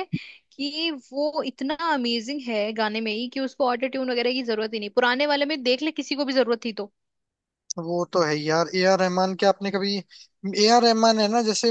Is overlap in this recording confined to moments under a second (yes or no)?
yes